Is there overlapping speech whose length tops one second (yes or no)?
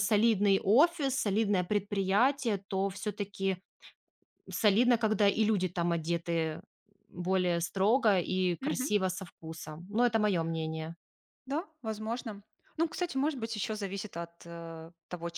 no